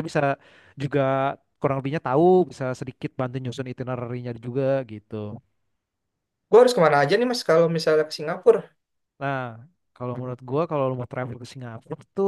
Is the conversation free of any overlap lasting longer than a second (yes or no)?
yes